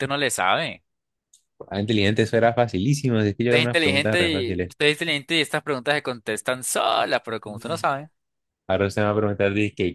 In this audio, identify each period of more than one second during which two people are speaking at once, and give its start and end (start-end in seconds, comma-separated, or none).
3.5-4.7